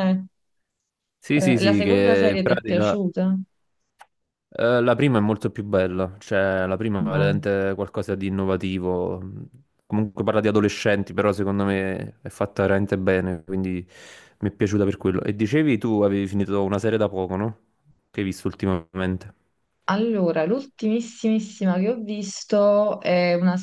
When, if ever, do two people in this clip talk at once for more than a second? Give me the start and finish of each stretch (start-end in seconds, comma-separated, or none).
1.4-3.0